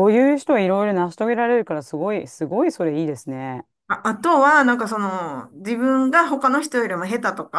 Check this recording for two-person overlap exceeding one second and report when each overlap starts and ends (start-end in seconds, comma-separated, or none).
none